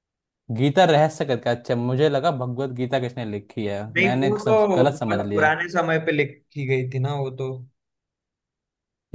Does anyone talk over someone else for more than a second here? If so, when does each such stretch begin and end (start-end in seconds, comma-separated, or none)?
4.0-5.5